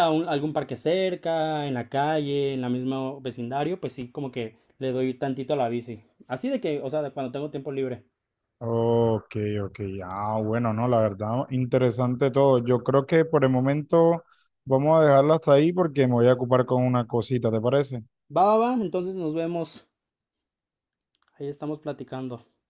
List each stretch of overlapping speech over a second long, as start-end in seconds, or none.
none